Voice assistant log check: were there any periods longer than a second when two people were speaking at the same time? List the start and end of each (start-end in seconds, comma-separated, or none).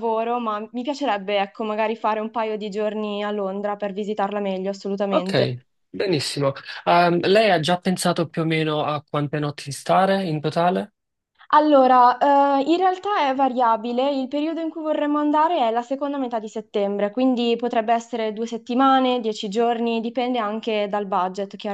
none